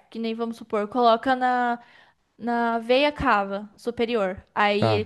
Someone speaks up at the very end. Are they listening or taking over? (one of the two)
listening